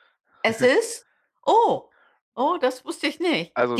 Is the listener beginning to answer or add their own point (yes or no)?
yes